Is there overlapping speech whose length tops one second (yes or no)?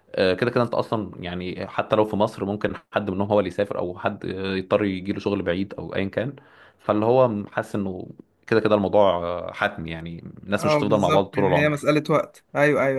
yes